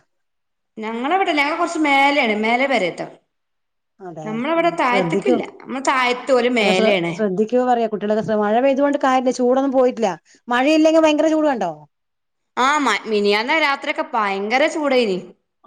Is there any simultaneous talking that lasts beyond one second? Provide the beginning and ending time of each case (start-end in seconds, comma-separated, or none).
none